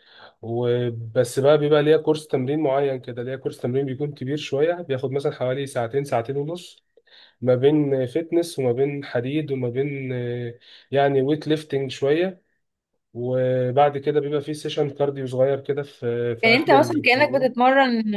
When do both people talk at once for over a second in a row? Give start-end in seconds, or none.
16.4-17.6